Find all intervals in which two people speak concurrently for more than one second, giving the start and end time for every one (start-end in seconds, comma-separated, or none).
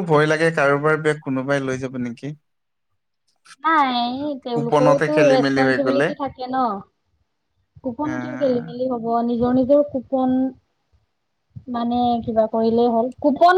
4.5-6.0